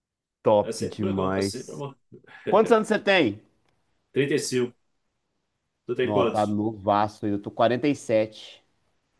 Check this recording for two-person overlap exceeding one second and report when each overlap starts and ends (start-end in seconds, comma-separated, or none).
0.6-1.8